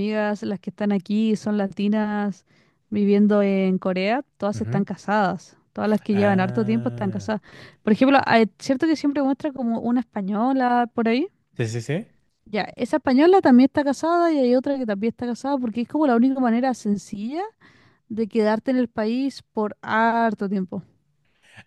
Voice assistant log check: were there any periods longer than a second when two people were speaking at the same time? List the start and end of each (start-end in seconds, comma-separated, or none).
6.1-7.3